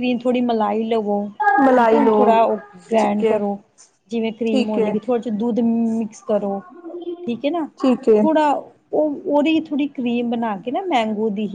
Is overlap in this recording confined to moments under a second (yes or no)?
yes